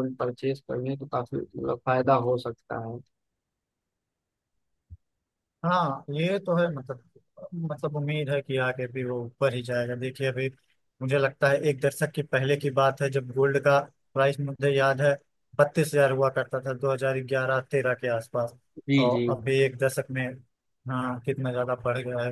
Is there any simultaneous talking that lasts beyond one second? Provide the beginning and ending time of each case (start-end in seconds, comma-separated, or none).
none